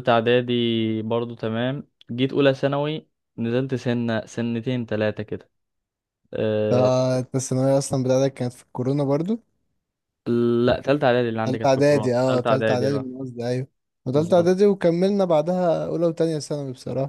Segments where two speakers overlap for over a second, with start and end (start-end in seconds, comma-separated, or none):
11.4-13.1